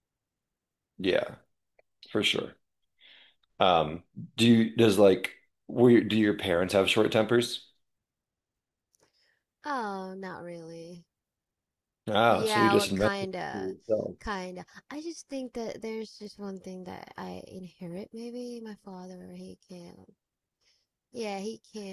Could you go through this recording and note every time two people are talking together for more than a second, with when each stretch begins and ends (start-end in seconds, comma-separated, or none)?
12.3-13.7